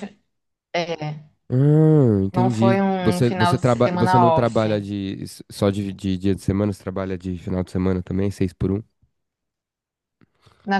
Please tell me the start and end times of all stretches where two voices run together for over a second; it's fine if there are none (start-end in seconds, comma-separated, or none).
2.3-4.7